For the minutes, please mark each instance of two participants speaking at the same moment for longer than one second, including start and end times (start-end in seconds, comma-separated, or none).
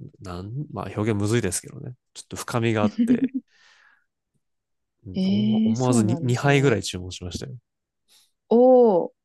5.1-6.8